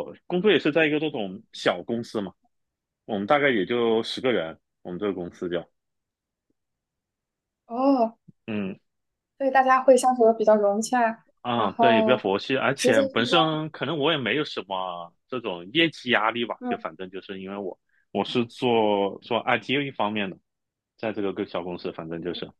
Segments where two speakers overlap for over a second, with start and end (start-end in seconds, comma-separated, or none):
11.4-13.6